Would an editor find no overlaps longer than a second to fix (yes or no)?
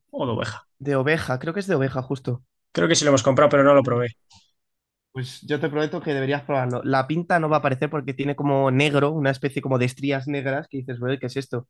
yes